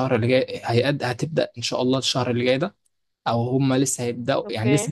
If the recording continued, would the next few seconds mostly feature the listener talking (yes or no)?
no